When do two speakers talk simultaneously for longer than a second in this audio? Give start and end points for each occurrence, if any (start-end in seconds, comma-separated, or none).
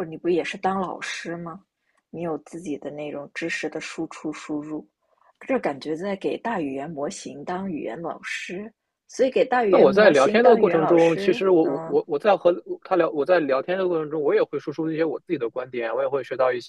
9.7-12.0